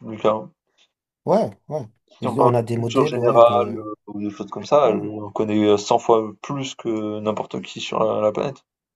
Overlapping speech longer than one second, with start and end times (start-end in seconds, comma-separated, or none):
2.2-3.7